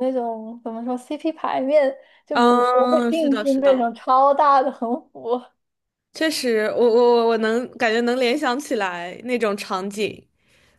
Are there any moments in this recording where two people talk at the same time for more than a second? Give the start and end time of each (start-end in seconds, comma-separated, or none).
2.3-3.9